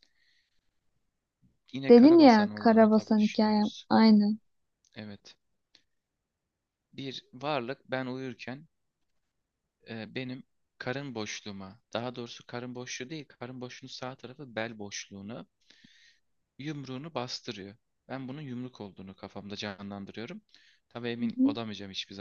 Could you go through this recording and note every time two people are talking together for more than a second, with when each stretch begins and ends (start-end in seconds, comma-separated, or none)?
1.9-3.9